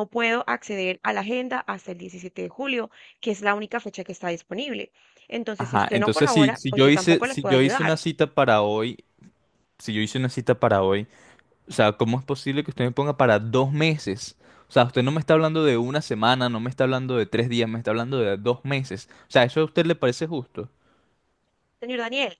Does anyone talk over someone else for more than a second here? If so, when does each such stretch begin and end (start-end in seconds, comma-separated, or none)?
5.6-8.0